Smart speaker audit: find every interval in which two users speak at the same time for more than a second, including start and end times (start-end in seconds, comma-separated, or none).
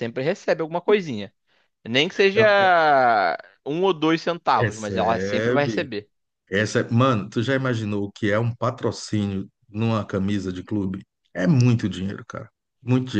4.6-5.9